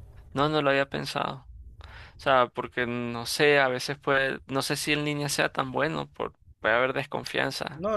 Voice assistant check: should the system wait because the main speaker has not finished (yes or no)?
no